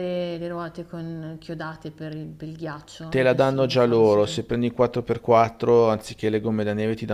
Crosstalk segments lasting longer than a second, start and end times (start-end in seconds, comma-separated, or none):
3.1-4.5